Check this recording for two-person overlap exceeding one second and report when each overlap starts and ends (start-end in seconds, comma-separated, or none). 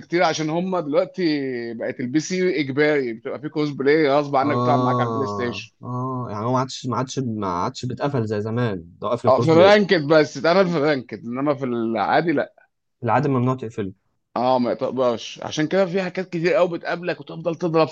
4.4-5.7